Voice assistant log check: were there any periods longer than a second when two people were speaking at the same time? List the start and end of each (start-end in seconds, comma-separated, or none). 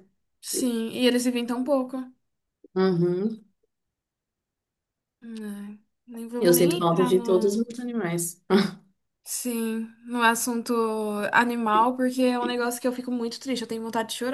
6.4-7.7